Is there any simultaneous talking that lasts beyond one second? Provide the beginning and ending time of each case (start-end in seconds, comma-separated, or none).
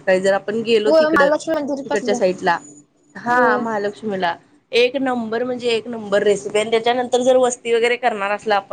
0.8-2.2